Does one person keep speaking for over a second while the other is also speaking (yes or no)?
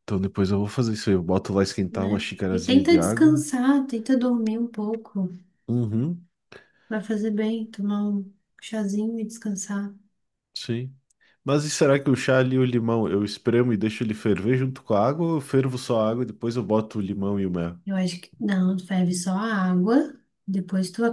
yes